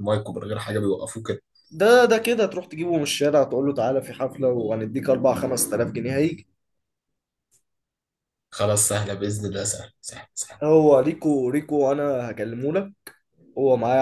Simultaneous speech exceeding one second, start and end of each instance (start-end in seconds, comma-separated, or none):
none